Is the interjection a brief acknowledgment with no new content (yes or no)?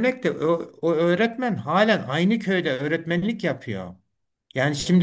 yes